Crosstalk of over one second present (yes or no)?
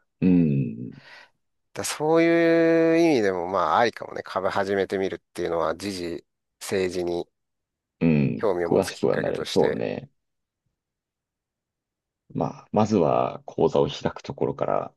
yes